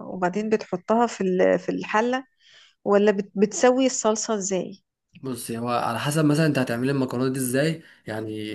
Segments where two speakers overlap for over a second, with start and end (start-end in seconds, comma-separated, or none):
none